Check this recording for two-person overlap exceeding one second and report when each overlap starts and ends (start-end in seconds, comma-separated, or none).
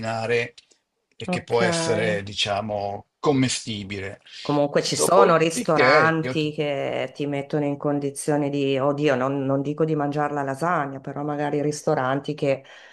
4.8-6.5